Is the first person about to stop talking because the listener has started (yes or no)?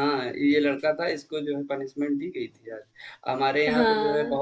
no